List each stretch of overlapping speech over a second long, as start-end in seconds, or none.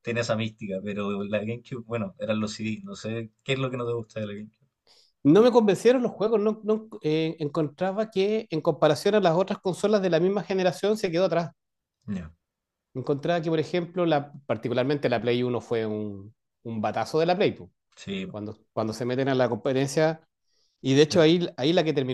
none